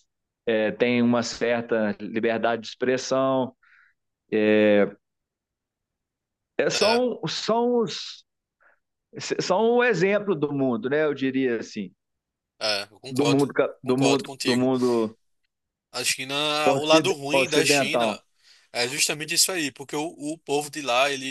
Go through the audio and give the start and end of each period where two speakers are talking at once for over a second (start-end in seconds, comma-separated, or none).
13.1-14.7, 16.7-18.2